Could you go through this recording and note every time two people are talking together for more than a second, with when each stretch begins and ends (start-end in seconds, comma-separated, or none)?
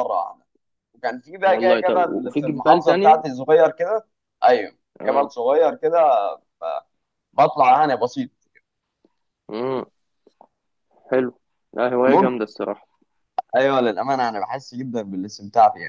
1.4-3.2